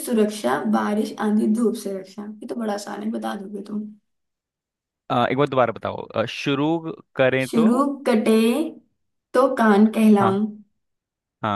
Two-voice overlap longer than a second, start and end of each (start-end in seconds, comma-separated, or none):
none